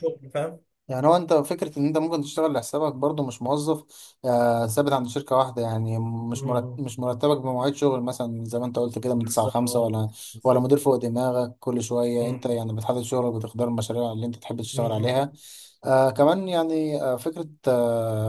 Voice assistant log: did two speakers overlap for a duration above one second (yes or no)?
yes